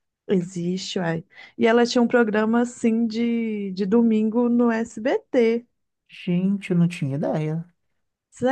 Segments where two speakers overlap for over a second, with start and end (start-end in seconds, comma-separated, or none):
none